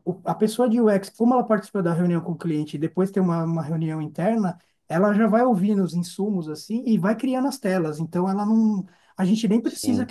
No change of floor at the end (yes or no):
yes